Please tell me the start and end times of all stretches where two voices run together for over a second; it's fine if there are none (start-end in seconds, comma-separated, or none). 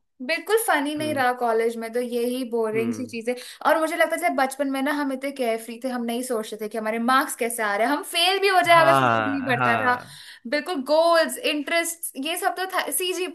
8.8-10.0